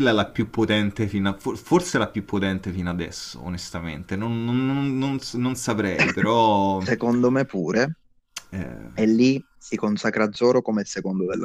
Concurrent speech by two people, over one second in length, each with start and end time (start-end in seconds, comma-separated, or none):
none